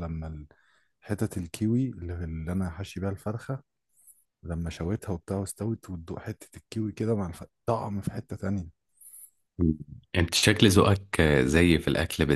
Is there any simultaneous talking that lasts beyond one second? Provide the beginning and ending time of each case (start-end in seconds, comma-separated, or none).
none